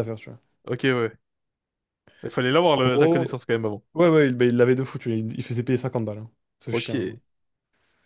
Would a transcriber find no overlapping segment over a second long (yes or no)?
yes